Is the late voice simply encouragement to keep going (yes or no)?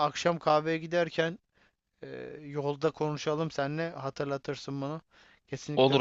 no